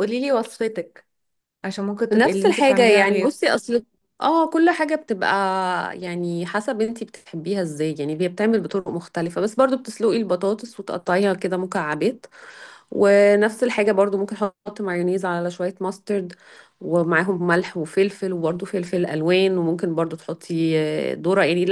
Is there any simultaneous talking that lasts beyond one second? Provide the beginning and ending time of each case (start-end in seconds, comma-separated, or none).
2.1-3.4